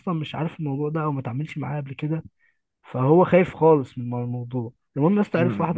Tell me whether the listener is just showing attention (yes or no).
no